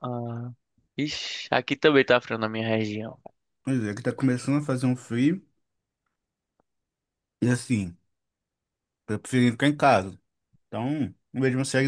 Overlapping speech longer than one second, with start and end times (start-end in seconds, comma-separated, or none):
none